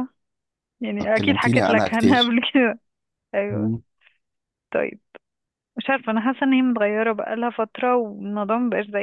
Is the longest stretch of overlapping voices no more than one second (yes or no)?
no